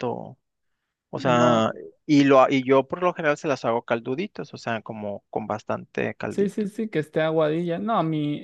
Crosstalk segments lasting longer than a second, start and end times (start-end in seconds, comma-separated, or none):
none